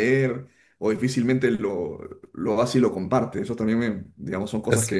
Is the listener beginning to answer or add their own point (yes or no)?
no